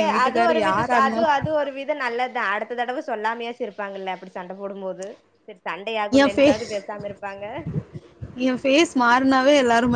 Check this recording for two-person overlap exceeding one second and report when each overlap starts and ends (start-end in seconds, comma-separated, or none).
none